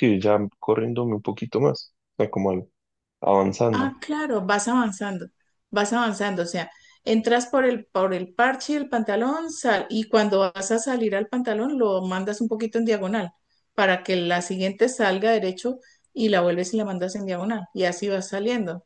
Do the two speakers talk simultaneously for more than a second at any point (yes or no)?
no